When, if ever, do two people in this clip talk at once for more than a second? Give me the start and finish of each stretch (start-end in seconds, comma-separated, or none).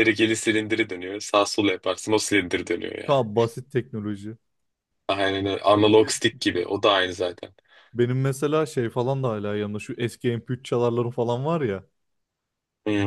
none